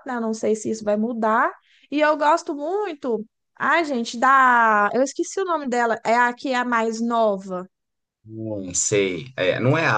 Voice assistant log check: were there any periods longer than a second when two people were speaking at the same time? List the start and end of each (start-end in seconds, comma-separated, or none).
none